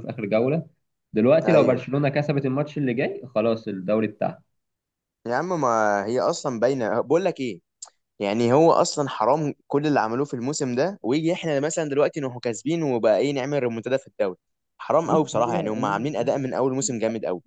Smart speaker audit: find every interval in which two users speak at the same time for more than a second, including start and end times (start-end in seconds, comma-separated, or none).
15.0-16.4